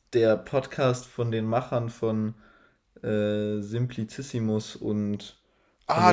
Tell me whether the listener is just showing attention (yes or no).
no